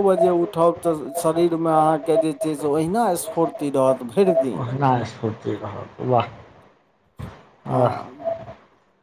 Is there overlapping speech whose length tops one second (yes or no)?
no